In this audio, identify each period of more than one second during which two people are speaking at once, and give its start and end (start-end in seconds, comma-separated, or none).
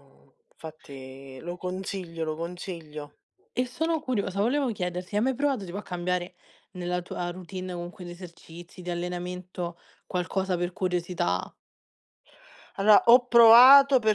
none